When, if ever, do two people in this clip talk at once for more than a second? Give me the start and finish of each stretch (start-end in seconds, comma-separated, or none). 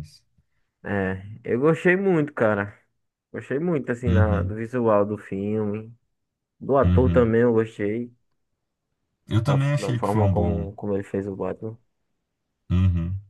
9.4-10.7